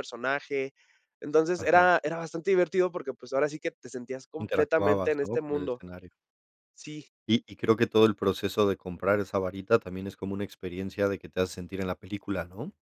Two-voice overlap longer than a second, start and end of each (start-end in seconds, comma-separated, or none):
4.4-5.8